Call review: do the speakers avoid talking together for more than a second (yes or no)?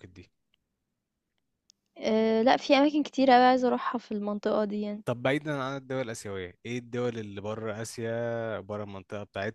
yes